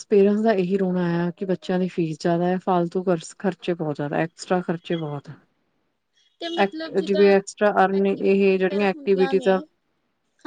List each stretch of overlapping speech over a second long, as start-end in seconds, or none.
8.1-9.6